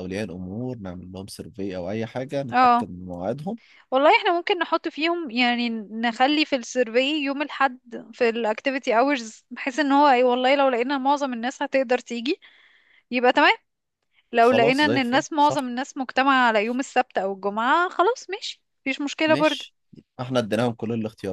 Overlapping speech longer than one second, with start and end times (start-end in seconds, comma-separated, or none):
14.4-15.7